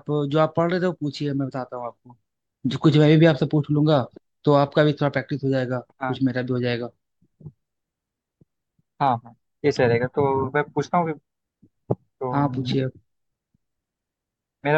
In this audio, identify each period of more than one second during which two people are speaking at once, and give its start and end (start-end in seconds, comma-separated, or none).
none